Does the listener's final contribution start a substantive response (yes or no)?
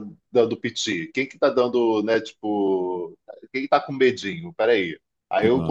no